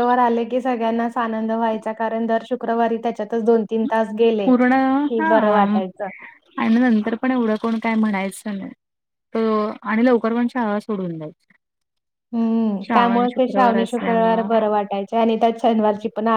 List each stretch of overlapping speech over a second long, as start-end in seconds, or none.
12.9-14.5